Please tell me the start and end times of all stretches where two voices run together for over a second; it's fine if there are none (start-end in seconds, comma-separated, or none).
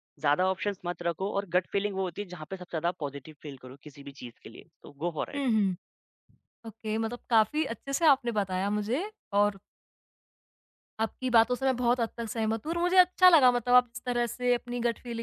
none